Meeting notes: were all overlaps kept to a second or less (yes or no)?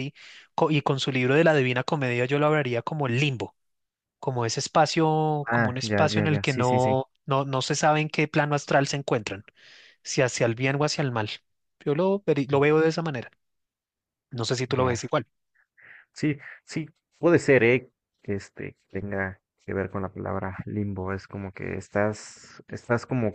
no